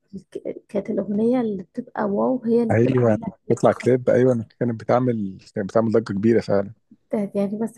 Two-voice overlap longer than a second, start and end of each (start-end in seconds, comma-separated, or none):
2.7-4.1